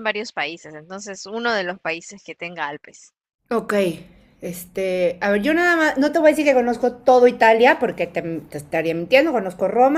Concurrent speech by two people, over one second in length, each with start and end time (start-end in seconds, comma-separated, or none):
none